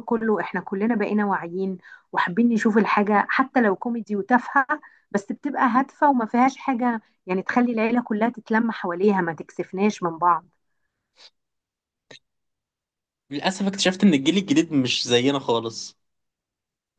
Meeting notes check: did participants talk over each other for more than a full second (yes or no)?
no